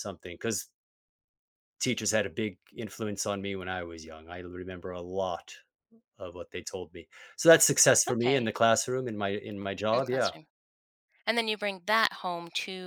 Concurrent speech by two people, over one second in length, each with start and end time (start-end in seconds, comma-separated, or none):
none